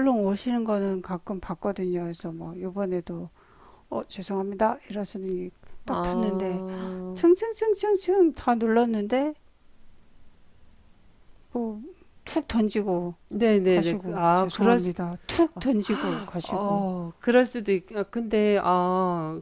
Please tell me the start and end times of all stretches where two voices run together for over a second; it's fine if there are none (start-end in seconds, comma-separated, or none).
13.7-14.9